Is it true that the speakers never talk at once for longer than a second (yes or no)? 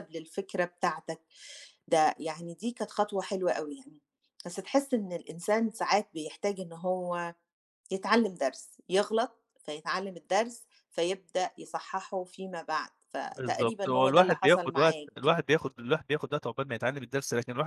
no